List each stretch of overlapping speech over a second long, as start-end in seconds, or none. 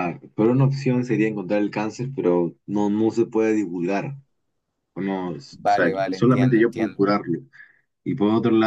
5.5-7.0